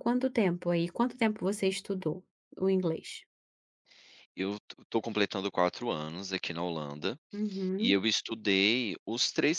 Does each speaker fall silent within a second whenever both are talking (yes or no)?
yes